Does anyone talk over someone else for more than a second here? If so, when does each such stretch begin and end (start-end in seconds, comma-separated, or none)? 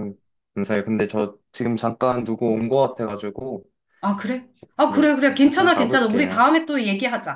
4.9-6.4